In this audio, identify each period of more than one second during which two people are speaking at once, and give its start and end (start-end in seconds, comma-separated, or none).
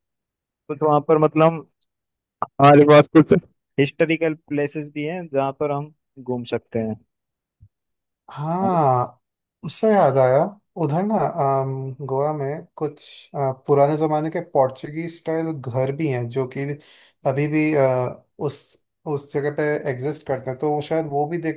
none